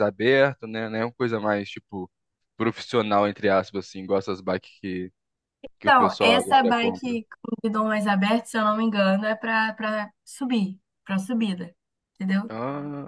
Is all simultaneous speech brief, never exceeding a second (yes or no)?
no